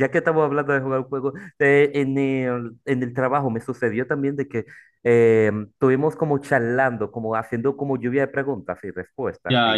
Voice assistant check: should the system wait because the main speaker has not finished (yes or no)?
no